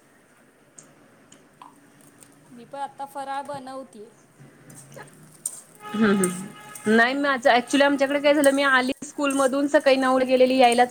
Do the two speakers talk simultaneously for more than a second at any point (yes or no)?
yes